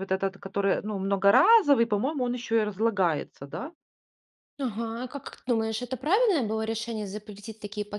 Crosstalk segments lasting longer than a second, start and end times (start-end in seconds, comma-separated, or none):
none